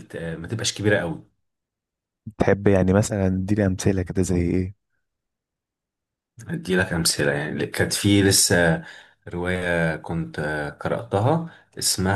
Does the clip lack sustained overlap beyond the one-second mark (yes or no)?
yes